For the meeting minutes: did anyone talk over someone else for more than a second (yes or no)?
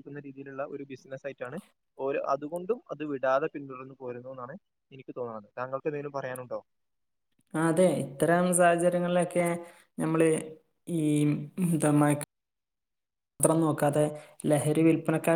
no